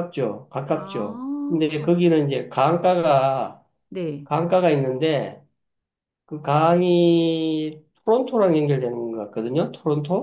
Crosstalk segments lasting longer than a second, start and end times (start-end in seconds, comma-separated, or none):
0.7-2.0